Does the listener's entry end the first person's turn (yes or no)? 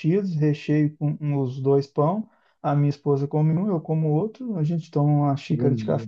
no